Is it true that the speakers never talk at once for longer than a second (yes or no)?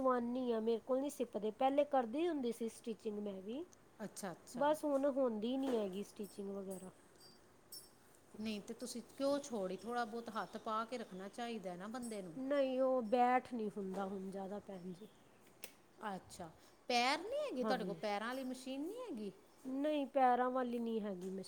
yes